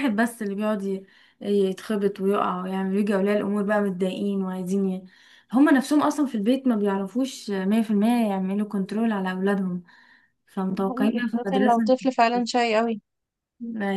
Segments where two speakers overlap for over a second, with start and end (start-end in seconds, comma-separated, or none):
10.7-11.9